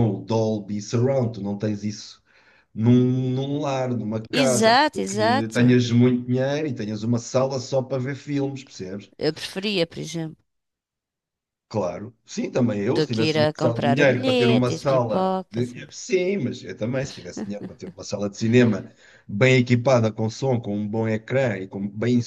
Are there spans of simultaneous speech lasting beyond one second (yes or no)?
yes